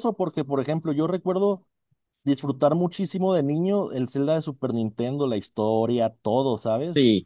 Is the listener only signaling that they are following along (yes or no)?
yes